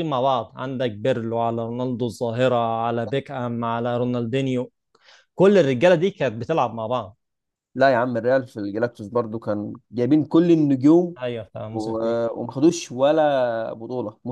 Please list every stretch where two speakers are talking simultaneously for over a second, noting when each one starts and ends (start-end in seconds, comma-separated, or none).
none